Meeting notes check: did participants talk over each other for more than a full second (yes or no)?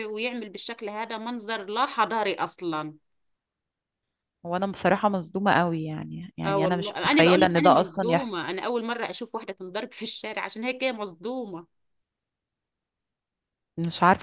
yes